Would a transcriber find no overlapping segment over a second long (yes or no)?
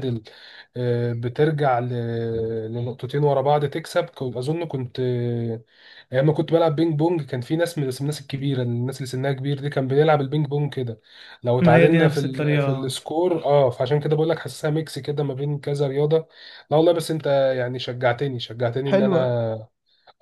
no